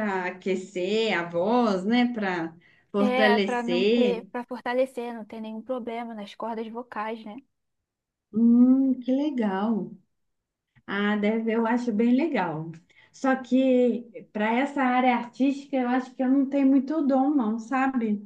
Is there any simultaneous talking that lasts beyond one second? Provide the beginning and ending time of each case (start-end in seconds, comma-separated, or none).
3.0-4.3